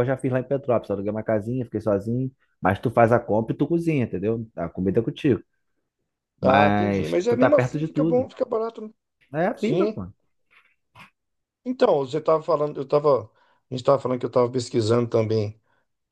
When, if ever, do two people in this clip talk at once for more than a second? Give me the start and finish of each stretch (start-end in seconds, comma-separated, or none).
6.4-8.3